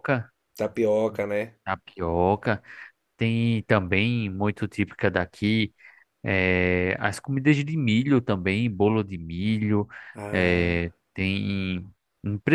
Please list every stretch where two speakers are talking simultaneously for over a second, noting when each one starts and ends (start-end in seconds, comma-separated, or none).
none